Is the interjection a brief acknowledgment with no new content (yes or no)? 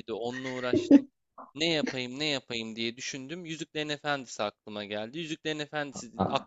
yes